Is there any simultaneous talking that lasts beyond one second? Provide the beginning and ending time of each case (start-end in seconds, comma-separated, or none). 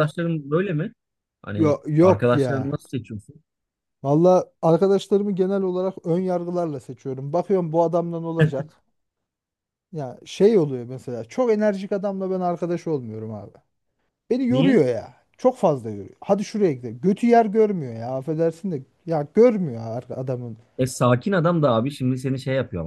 1.5-2.8